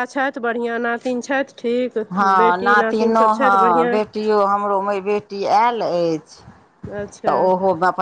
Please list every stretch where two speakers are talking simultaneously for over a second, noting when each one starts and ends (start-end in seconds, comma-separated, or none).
2.4-4.0